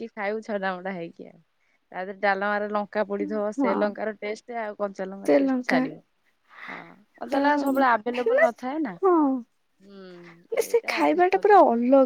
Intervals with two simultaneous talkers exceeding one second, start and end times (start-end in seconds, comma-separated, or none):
9.7-11.5